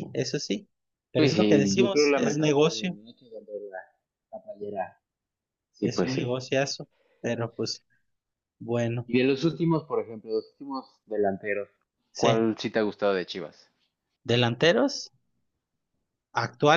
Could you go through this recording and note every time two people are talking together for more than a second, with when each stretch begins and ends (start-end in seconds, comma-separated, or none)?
1.2-3.0